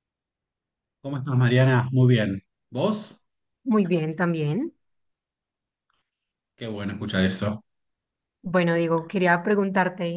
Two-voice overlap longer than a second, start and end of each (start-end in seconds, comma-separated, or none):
none